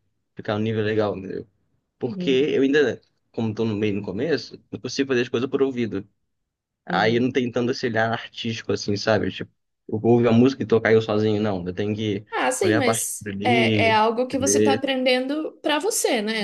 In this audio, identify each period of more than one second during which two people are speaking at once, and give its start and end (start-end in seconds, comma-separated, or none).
12.6-14.0